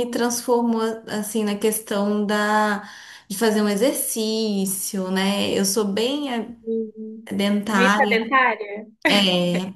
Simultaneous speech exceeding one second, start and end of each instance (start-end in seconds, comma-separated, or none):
none